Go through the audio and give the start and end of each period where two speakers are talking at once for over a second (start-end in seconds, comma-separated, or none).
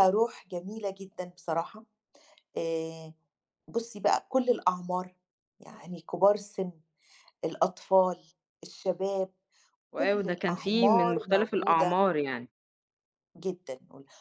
9.9-12.1